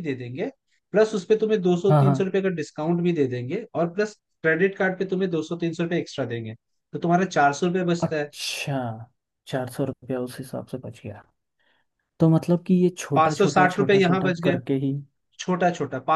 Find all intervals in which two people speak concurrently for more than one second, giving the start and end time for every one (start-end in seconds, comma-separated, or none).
13.1-14.6